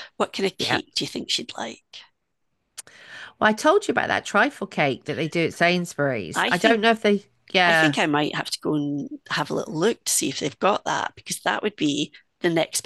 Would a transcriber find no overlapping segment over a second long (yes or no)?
yes